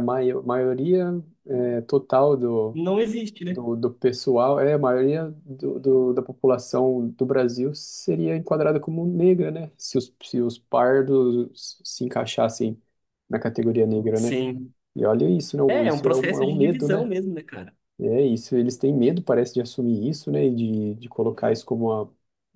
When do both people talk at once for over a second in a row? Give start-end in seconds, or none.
15.7-17.1